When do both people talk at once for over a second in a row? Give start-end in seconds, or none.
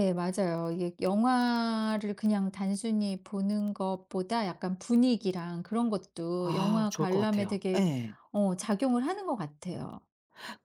6.4-7.8